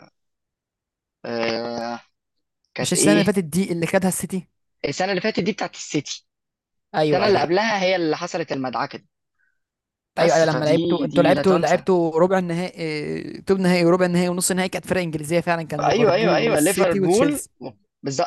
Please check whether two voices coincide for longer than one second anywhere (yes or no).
yes